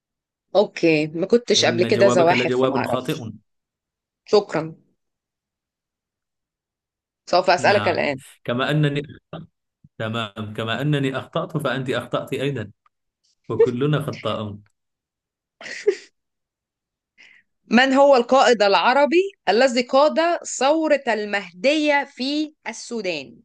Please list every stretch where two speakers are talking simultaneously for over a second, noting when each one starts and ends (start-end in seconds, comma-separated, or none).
1.6-3.3